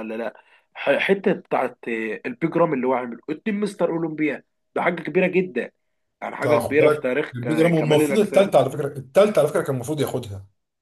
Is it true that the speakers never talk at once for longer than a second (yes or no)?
no